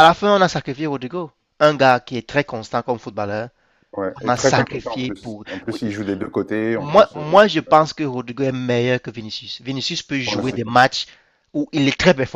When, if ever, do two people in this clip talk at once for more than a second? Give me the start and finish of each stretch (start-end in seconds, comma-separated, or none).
4.2-5.8